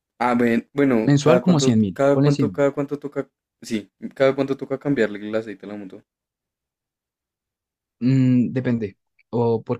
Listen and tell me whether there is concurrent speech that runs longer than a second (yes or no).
yes